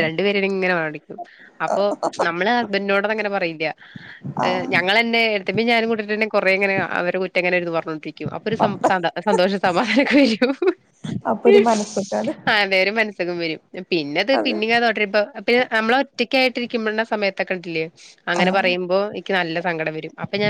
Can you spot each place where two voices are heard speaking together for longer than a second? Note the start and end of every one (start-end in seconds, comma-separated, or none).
none